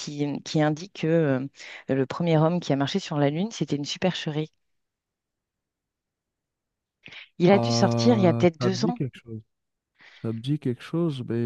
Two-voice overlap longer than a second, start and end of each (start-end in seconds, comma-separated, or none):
7.5-9.0